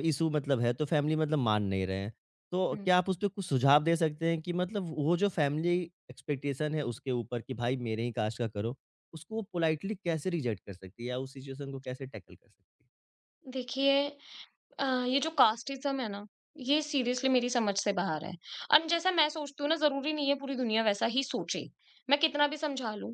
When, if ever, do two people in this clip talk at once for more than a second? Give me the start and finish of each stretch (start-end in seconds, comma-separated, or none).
none